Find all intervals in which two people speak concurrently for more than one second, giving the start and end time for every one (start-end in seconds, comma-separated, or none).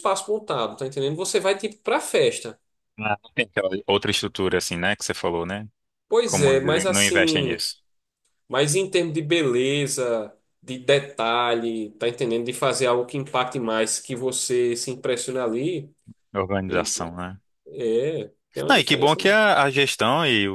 6.2-7.7